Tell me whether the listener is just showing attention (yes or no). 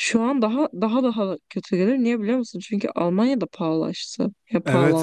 no